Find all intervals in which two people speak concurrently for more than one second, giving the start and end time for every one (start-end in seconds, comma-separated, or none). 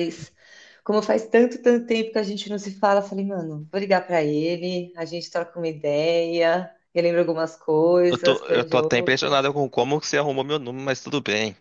8.1-9.4